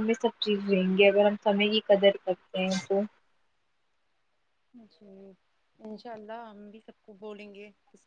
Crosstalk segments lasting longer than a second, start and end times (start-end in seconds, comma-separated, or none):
none